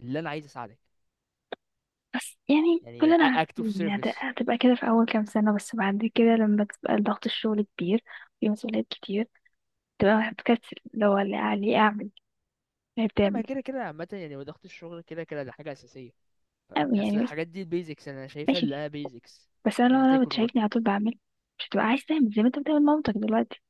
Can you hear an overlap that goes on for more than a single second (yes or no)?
yes